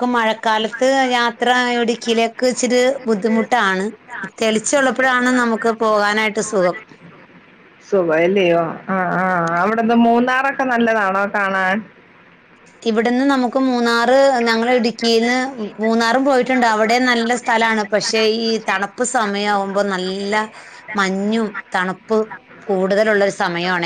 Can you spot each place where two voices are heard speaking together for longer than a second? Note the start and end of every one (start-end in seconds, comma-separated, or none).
none